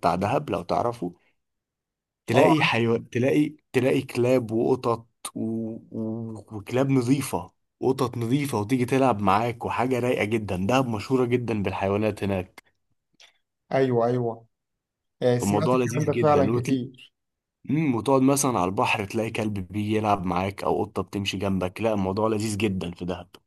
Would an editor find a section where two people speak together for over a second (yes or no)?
yes